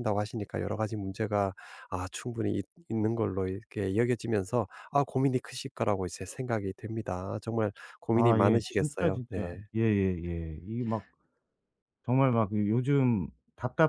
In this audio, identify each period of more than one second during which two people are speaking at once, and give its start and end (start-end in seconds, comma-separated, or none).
8.2-9.6